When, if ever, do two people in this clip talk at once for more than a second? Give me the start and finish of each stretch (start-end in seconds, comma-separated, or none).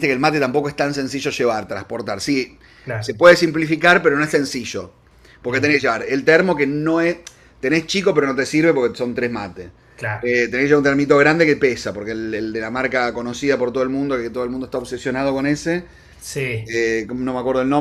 none